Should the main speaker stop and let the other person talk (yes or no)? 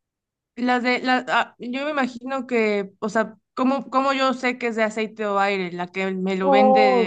yes